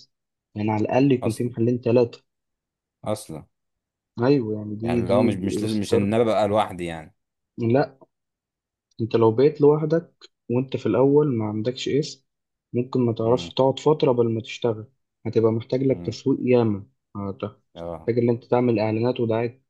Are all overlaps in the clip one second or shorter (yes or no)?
no